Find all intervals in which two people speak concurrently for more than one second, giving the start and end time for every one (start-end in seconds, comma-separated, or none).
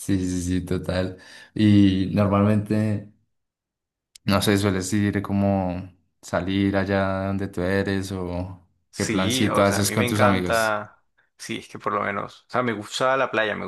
8.9-10.8